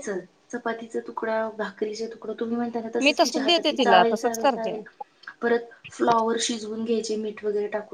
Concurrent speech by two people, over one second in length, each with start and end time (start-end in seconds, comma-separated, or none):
3.0-4.8